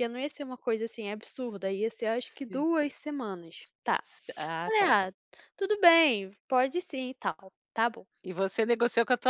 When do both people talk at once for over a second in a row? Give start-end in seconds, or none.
none